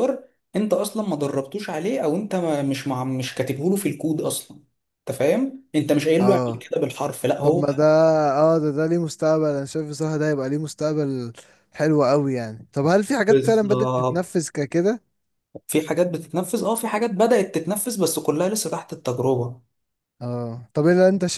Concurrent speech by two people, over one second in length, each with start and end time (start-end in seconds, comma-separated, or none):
13.3-14.5